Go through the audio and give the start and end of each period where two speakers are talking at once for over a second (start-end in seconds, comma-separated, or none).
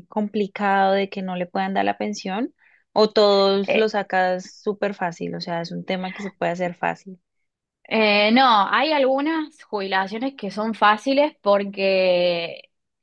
none